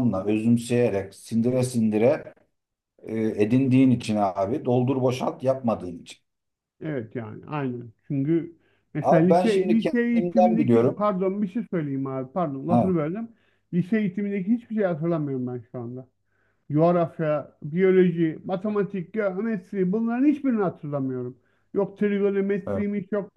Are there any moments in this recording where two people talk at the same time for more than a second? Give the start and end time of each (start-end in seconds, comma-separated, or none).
9.0-11.1